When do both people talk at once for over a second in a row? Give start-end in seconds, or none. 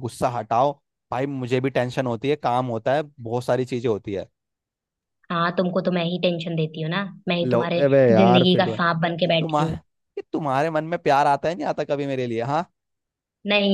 7.4-9.8